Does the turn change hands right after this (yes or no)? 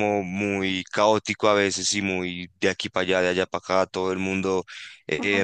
no